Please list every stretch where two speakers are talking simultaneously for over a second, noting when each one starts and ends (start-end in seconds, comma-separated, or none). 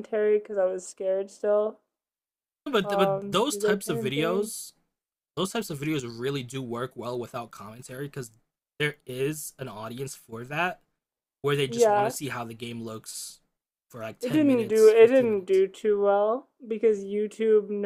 2.8-4.5, 14.2-15.6